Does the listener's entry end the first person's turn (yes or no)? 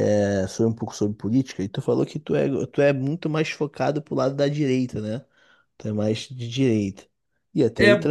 yes